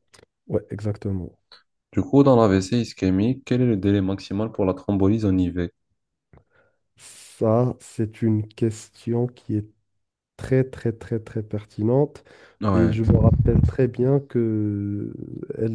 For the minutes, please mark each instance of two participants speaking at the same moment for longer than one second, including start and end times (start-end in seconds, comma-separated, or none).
none